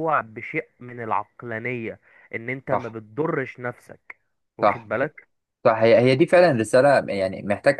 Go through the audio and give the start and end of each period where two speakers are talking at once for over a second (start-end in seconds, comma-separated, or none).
none